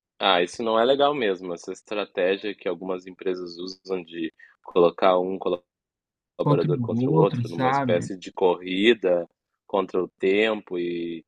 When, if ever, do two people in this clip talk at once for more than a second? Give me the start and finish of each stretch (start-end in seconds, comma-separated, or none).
6.4-8.1